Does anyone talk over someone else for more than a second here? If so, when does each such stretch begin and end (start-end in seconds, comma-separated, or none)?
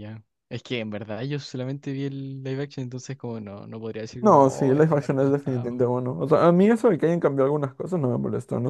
4.2-5.8